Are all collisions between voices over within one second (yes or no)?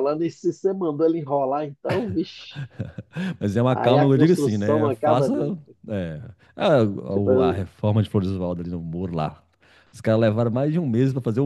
no